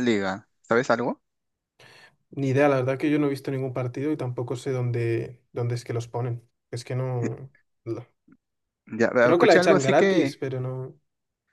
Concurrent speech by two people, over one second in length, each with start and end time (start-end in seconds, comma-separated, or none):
9.2-10.4